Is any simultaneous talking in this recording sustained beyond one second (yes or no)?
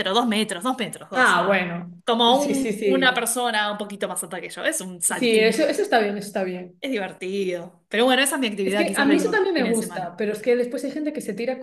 yes